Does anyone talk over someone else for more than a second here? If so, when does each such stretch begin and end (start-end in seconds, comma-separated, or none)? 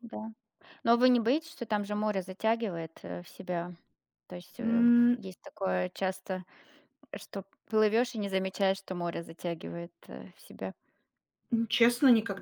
none